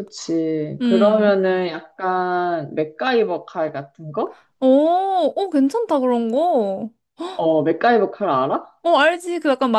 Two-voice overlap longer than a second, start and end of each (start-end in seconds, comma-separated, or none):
none